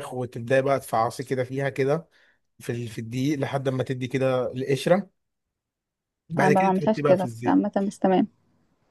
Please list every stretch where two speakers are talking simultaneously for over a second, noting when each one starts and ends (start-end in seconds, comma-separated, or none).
6.4-7.7